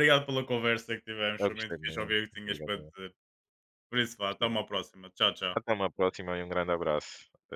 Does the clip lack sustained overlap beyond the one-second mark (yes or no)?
no